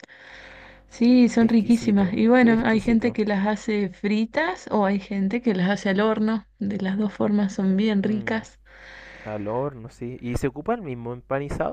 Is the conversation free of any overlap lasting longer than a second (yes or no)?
no